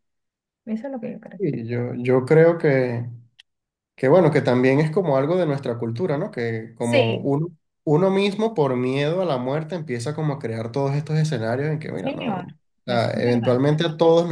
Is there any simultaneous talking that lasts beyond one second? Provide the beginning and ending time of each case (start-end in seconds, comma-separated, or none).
11.9-13.6